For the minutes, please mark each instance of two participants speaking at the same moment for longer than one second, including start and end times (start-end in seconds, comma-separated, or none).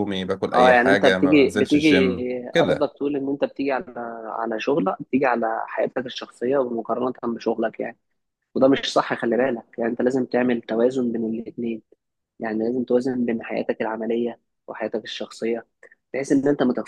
0.5-1.9